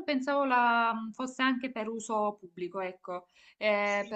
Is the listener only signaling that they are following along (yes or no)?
no